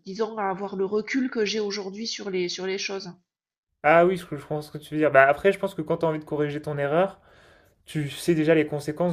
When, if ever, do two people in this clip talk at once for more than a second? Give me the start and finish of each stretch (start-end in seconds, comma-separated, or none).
none